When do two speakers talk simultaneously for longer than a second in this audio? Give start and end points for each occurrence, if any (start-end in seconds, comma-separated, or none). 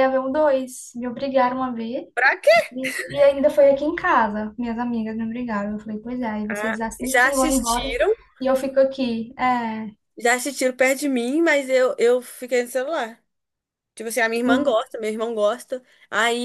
6.5-8.0